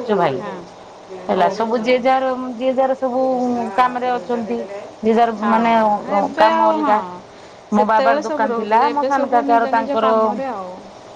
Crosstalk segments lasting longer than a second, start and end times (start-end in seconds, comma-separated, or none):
7.8-10.1